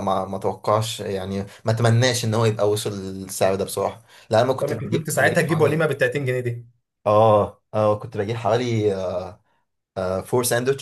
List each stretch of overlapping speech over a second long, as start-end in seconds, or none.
4.6-5.8